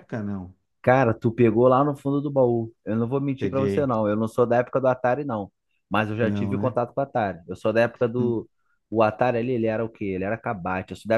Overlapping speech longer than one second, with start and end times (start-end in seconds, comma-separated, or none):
none